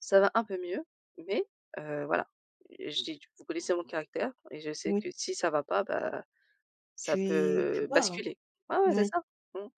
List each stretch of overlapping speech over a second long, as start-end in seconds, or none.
7.0-8.2